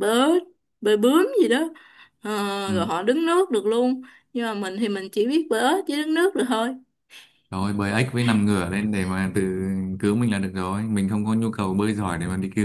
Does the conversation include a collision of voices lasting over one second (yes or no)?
no